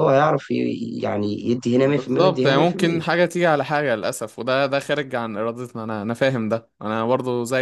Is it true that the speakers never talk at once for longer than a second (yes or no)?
no